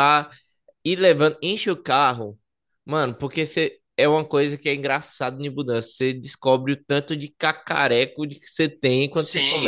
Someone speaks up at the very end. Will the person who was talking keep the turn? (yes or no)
no